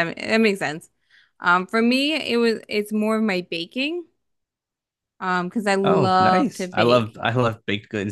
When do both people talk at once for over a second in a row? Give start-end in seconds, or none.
5.8-7.2